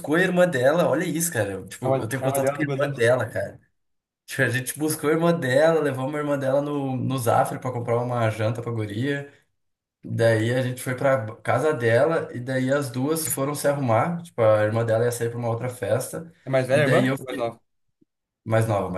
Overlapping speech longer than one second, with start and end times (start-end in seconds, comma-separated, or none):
1.8-3.1